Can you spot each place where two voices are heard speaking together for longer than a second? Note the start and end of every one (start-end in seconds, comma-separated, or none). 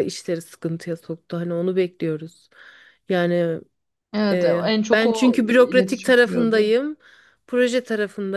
4.3-6.7